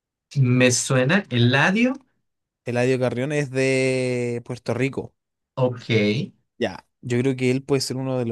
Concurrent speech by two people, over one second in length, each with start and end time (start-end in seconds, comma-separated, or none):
none